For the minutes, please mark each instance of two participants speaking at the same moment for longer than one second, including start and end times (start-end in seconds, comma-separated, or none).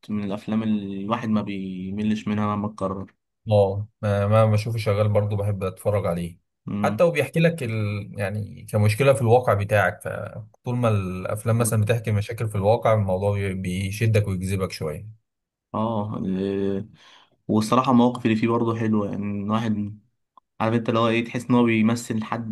none